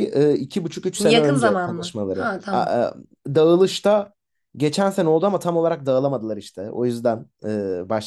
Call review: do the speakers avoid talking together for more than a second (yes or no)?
no